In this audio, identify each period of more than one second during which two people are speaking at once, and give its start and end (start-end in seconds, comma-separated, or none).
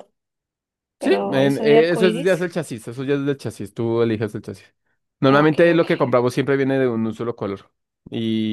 1.0-2.5